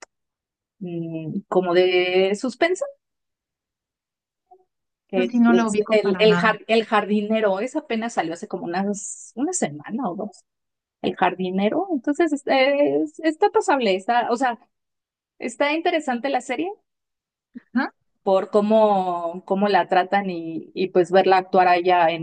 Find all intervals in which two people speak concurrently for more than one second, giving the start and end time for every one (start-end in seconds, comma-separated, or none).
5.1-6.5